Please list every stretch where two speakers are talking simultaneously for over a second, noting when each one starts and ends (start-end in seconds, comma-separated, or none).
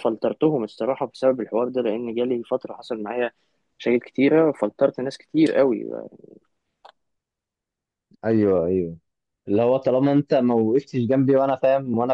none